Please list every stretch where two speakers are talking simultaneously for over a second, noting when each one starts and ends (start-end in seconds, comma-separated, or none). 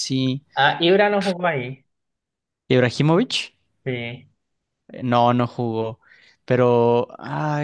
none